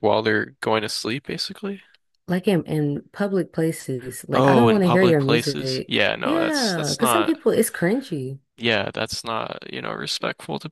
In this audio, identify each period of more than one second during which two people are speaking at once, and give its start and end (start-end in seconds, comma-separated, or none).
4.3-7.4